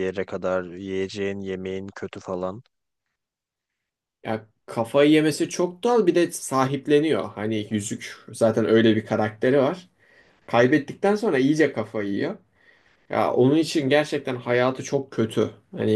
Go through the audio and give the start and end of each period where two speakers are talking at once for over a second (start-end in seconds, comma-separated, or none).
none